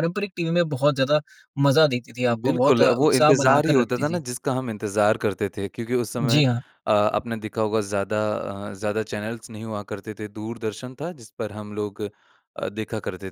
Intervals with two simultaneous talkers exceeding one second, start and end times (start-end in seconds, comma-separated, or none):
2.3-4.2